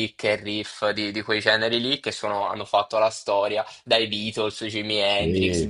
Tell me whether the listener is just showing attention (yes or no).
yes